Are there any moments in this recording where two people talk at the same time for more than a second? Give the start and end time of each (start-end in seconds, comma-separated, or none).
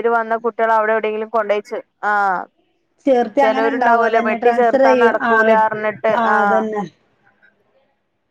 3.4-5.5